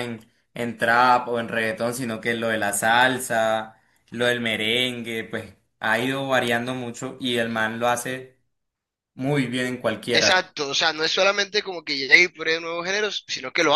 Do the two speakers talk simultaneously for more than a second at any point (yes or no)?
no